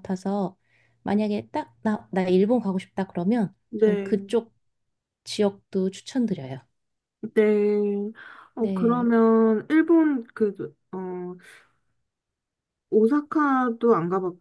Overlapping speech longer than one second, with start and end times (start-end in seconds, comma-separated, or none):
none